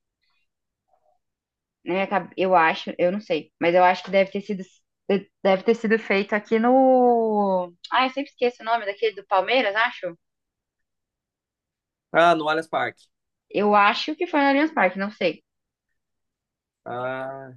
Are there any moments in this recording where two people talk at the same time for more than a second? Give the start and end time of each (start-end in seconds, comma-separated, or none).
none